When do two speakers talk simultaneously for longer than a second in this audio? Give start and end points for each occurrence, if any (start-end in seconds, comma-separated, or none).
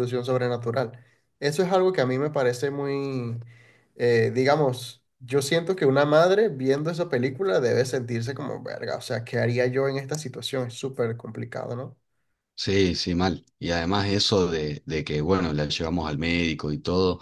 none